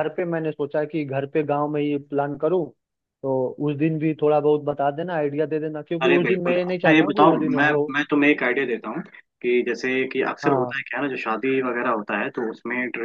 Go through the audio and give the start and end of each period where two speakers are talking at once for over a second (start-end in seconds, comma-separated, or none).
6.0-7.8